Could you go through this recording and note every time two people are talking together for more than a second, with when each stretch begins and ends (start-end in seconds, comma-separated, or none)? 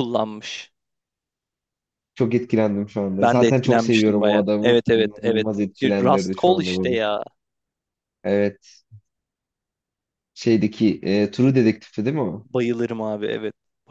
3.2-7.0